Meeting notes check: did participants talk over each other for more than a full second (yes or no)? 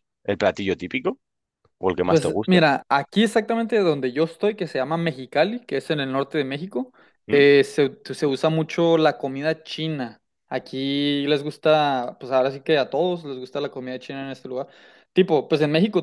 no